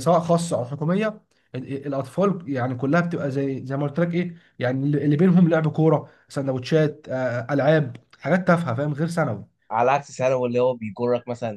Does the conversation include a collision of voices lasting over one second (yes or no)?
no